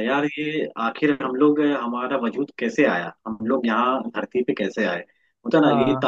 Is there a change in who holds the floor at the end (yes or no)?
no